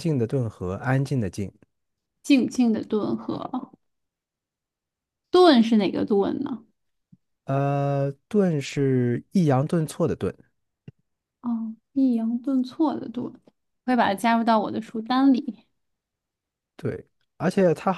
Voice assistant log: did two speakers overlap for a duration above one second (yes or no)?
no